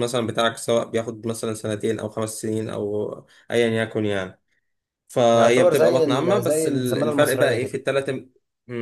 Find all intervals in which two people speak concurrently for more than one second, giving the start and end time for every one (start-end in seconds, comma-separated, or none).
5.3-7.8